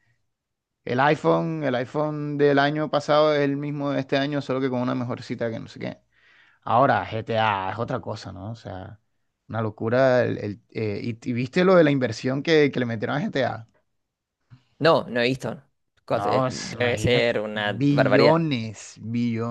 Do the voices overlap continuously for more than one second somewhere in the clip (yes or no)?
yes